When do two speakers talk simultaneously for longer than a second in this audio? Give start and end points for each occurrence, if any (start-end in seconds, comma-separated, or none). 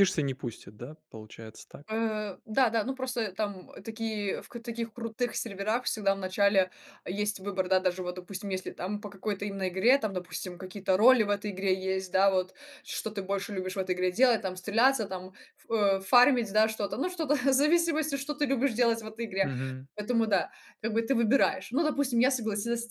none